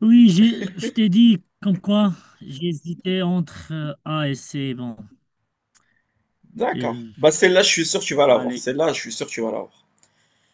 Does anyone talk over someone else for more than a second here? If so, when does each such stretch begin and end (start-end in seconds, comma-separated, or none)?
none